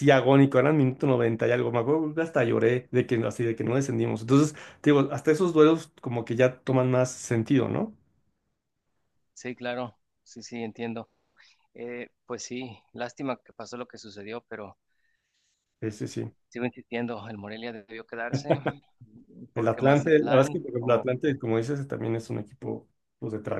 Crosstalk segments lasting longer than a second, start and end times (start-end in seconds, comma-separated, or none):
19.5-21.3